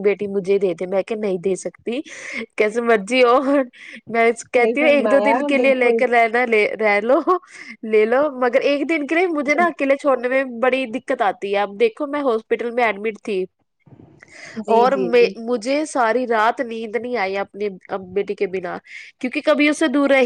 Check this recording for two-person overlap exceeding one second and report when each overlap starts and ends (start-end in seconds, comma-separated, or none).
4.5-6.0